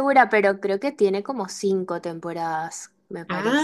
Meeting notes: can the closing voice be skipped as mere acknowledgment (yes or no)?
no